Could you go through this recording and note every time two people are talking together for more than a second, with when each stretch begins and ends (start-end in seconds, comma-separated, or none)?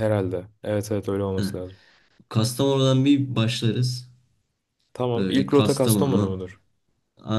5.2-6.4